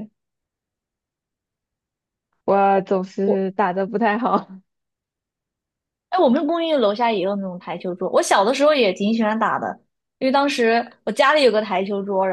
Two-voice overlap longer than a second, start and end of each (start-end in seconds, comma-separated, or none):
none